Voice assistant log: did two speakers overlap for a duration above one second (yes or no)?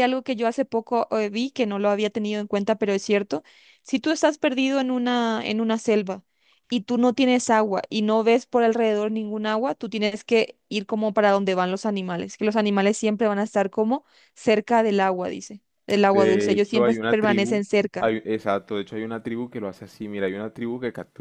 yes